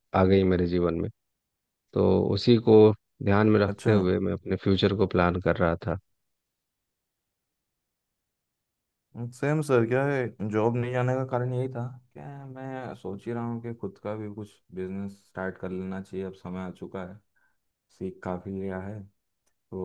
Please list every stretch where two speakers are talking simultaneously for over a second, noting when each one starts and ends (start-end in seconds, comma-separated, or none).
none